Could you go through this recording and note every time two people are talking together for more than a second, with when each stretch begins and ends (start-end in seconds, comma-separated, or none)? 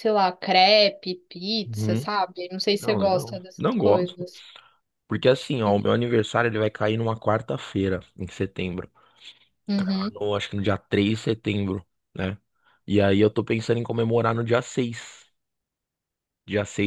2.8-4.3